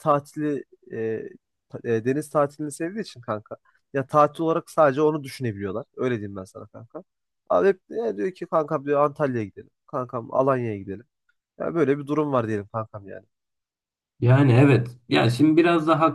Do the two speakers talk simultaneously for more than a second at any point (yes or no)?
no